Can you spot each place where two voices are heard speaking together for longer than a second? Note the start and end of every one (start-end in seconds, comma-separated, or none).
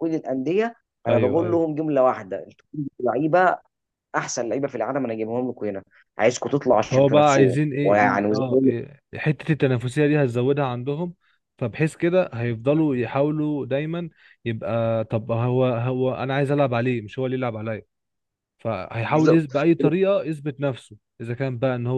6.8-8.7